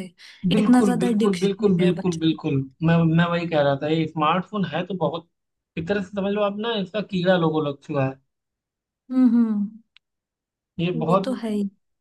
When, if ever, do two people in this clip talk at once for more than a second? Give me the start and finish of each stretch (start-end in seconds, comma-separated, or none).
0.6-2.4